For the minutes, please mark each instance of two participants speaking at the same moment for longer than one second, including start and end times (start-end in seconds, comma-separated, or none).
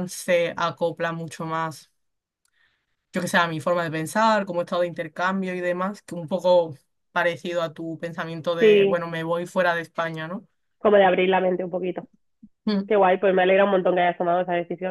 none